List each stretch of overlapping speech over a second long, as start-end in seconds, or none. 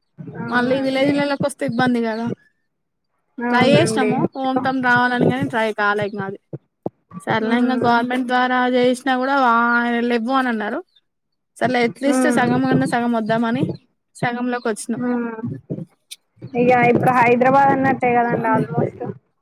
none